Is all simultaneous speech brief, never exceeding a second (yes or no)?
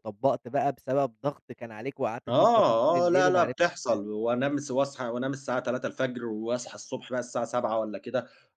no